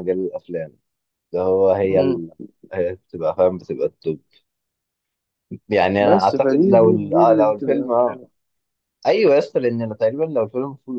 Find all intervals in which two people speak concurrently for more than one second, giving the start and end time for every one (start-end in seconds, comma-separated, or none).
6.0-8.2